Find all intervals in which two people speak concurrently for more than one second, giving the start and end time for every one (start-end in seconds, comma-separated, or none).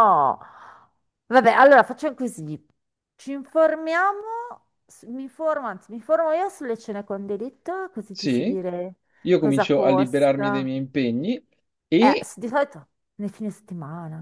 9.4-10.7